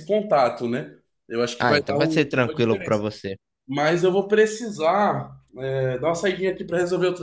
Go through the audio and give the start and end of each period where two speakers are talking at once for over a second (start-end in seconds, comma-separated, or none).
1.6-3.0